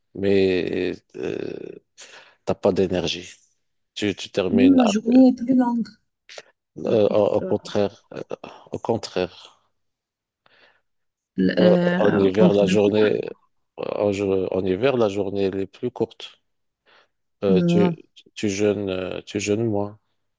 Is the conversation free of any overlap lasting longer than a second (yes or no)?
no